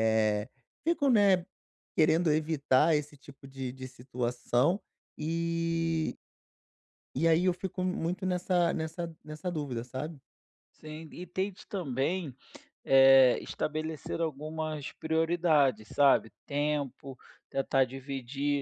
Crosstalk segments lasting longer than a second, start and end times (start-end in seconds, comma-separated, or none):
none